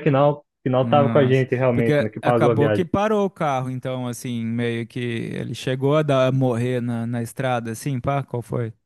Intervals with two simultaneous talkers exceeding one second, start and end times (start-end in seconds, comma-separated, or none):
0.8-2.8